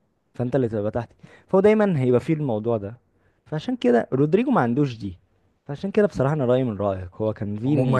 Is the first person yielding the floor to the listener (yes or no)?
yes